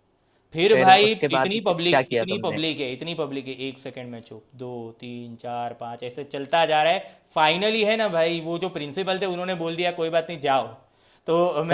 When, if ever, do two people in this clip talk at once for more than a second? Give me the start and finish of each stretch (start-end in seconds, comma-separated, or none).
0.7-2.6